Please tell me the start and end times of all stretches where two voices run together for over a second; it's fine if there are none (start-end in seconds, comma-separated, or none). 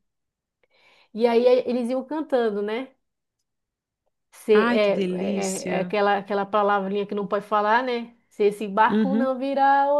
4.5-5.9